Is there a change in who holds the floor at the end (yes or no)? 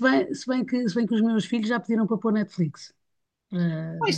yes